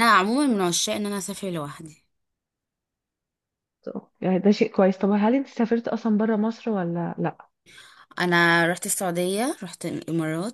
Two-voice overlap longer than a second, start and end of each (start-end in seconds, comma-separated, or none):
none